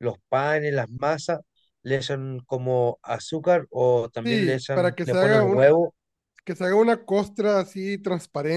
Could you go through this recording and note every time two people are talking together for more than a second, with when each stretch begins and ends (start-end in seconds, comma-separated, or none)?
4.2-5.7